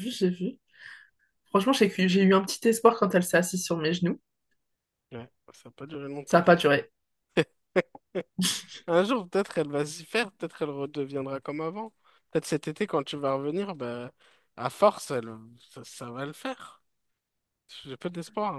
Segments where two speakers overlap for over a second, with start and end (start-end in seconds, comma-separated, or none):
none